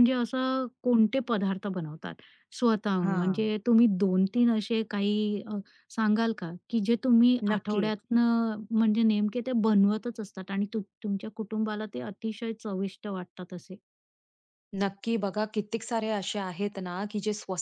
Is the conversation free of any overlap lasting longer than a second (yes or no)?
yes